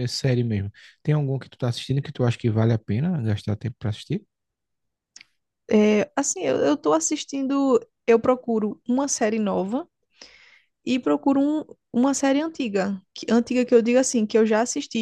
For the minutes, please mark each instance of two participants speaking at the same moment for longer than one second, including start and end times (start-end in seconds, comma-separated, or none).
none